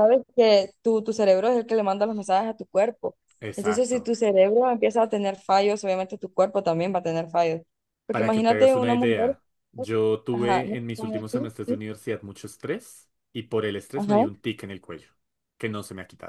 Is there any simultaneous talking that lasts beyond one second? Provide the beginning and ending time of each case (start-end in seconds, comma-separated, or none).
8.1-9.3, 10.3-11.8